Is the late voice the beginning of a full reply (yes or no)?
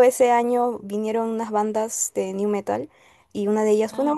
no